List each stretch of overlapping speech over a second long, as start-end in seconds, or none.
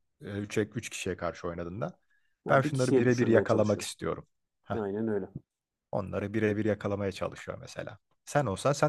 2.5-3.9